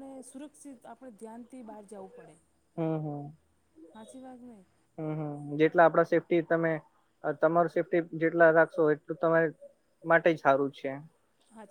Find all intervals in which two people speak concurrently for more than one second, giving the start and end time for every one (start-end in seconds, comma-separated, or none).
none